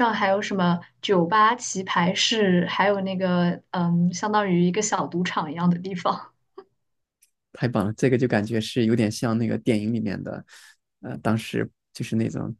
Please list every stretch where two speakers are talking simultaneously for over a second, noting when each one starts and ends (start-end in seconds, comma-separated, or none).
none